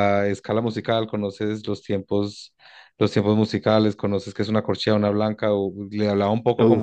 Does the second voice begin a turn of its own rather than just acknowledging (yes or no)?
no